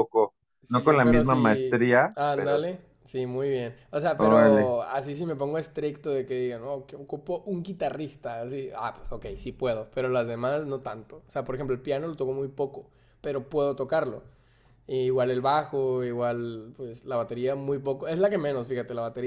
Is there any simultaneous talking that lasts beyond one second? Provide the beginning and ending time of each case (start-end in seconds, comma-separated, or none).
0.6-2.6